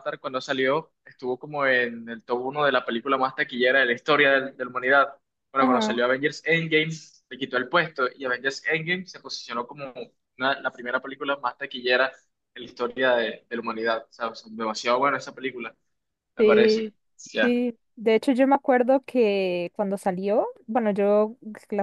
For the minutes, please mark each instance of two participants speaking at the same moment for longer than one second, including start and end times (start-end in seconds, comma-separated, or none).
none